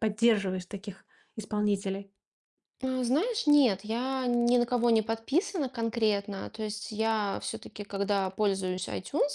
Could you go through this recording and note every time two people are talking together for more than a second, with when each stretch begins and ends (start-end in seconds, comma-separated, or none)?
none